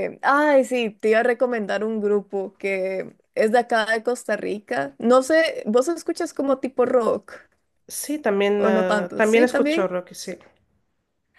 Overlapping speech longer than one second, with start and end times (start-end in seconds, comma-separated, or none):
8.6-9.9